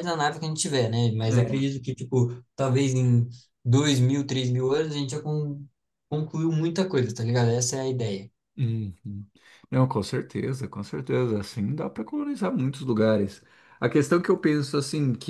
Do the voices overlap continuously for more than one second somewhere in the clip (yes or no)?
no